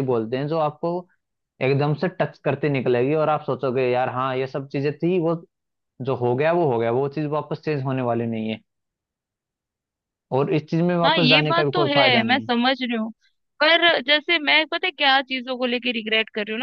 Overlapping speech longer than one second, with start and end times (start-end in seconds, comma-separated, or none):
11.0-12.5